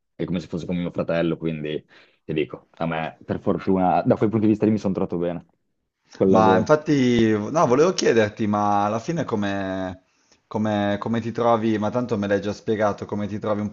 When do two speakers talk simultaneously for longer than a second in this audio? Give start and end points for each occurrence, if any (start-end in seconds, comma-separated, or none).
none